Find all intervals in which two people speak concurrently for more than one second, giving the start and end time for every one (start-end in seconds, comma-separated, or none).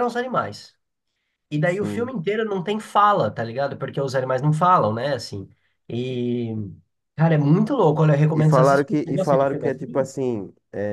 8.3-10.1